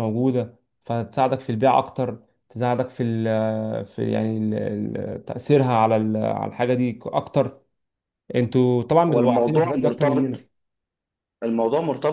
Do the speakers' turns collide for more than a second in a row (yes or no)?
yes